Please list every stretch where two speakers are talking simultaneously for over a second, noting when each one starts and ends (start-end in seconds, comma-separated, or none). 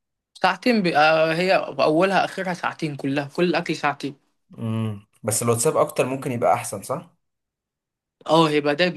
none